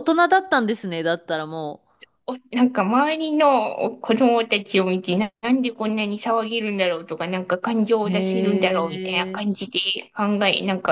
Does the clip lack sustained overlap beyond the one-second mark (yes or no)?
no